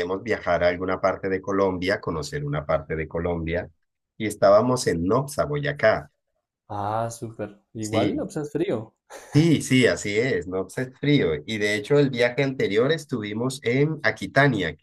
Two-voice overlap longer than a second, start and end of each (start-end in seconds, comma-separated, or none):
none